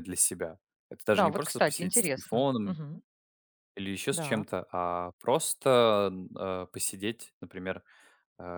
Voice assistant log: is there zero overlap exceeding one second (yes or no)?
no